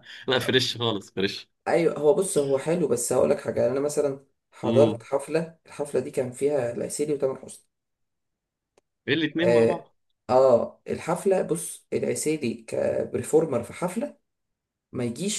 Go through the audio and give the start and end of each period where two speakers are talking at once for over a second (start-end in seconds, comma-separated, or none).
none